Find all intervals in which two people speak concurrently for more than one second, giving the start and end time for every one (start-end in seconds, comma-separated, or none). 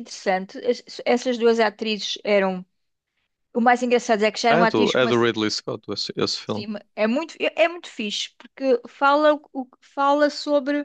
none